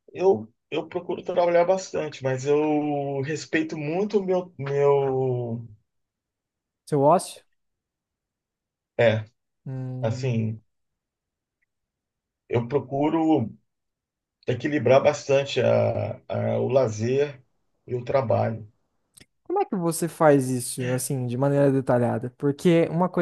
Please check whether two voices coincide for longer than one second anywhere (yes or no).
no